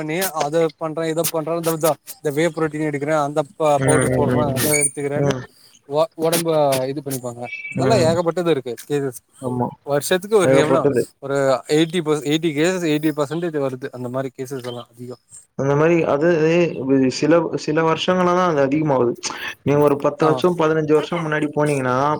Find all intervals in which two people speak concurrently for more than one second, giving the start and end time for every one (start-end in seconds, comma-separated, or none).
3.9-5.3